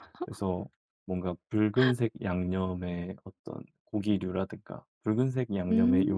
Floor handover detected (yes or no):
no